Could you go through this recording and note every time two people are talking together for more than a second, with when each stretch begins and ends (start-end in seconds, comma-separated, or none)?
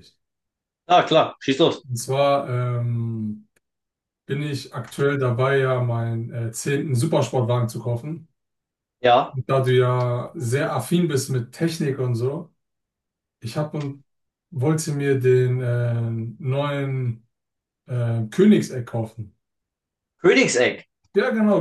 none